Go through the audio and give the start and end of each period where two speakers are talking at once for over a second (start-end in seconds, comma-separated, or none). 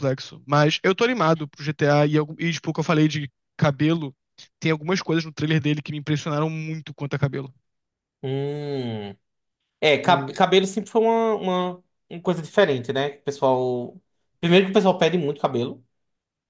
none